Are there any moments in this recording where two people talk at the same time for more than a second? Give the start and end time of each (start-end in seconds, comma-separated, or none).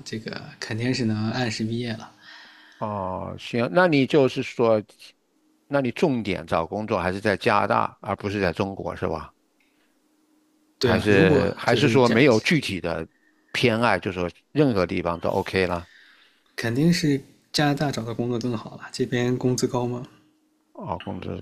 10.8-12.1